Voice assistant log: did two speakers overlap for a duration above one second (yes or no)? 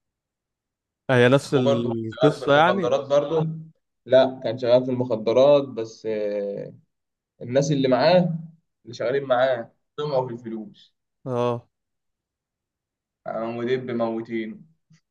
yes